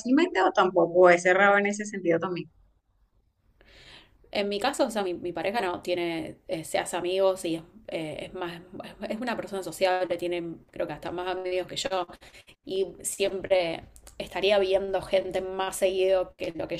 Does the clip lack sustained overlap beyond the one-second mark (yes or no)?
yes